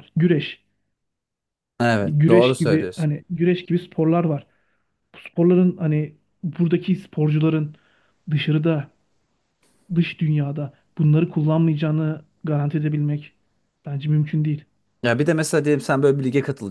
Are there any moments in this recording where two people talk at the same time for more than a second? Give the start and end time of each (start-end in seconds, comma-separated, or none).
1.9-3.1